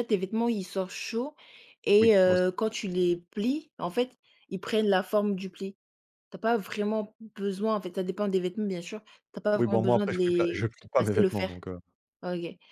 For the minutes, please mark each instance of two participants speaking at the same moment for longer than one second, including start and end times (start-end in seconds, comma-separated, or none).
9.5-11.5